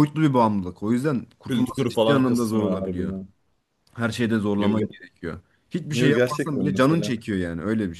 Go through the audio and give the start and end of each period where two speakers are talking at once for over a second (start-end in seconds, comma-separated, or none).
1.5-3.1, 5.9-7.2